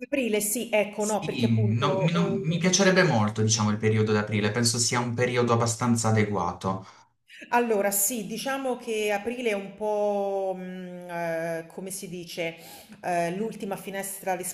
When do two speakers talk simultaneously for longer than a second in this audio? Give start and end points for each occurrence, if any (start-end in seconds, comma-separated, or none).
0.9-2.7